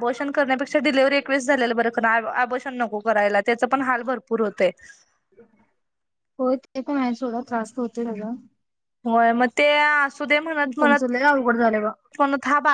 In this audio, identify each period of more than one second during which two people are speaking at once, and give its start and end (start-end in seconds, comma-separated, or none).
none